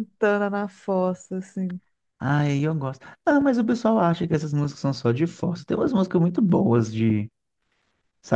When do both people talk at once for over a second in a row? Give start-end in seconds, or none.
none